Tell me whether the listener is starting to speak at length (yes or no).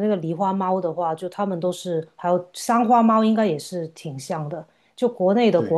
no